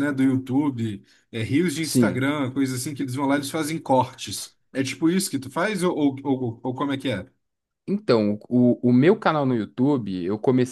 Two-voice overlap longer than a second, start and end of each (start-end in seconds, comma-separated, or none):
none